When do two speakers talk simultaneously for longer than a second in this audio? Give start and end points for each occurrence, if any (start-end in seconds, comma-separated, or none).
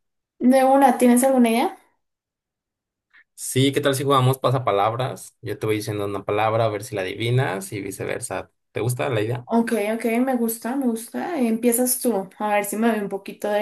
none